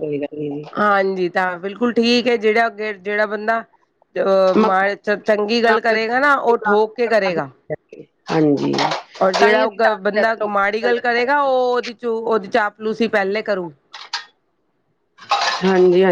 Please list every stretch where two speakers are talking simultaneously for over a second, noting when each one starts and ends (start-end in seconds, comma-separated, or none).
9.4-11.5